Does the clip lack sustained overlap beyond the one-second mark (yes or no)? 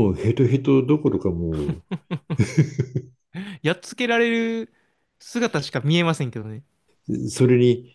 yes